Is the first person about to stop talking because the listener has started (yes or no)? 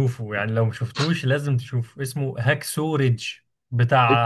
no